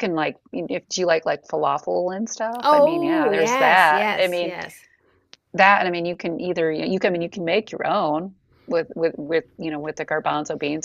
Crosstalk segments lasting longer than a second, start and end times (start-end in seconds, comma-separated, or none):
2.6-4.6